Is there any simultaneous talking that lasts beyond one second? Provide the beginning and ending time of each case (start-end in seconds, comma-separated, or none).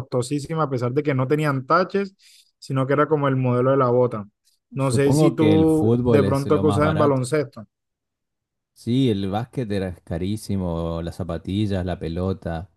4.8-7.2